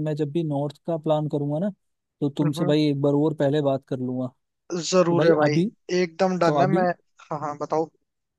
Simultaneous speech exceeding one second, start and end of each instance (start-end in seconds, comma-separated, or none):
none